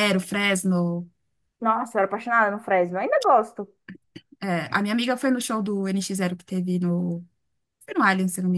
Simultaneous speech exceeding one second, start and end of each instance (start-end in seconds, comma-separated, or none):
none